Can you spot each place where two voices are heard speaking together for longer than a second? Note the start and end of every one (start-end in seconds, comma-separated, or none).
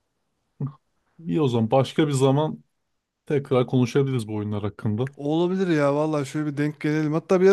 none